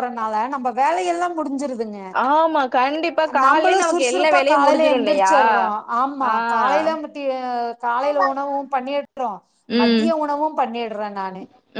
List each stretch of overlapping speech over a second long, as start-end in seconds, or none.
3.4-5.3